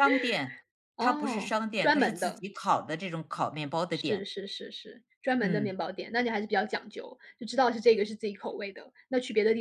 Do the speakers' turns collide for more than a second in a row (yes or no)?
yes